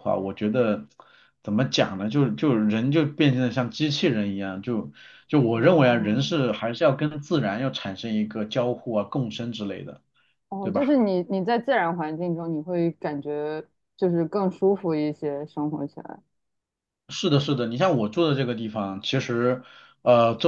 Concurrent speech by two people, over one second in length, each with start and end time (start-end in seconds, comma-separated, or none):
none